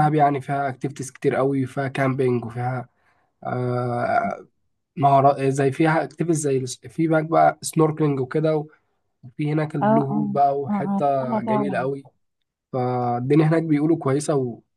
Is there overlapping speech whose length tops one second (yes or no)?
yes